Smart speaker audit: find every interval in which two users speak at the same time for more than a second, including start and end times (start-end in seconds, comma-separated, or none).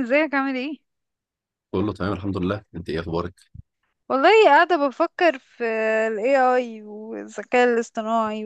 none